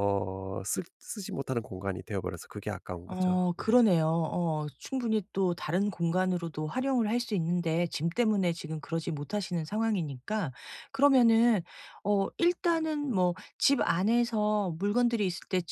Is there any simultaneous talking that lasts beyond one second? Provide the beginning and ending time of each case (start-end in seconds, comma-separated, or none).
none